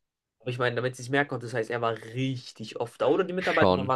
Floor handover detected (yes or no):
no